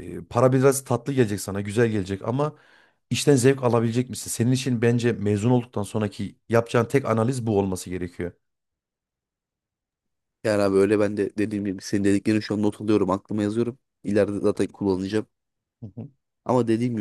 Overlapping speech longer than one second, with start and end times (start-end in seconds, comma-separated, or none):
none